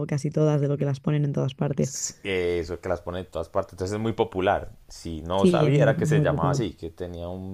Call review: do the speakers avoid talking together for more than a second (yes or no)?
no